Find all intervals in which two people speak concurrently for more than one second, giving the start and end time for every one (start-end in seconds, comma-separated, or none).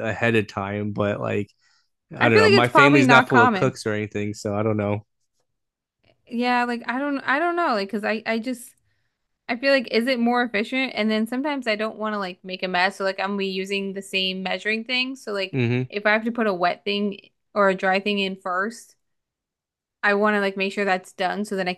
2.2-3.8